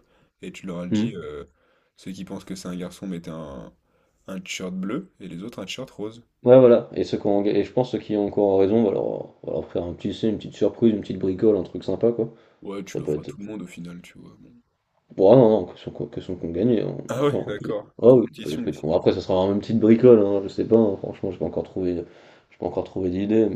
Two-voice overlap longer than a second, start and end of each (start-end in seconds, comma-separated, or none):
17.1-18.9